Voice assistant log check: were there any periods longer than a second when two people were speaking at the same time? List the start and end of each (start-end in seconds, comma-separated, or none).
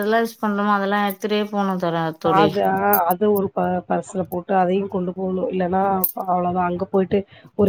none